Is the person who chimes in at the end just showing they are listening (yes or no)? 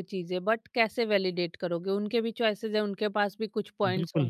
no